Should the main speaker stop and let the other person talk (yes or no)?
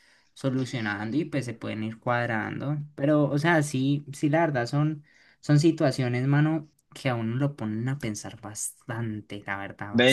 yes